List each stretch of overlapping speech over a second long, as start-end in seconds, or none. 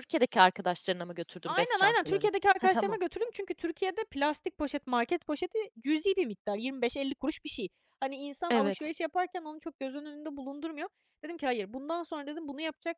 1.4-3.0